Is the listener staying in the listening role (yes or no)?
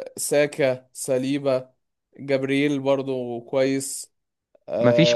yes